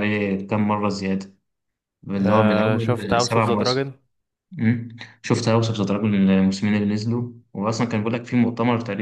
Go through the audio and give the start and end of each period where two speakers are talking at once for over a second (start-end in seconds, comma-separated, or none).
2.2-3.9